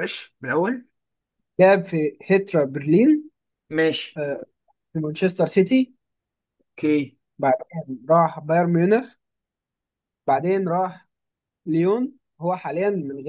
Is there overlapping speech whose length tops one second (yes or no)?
no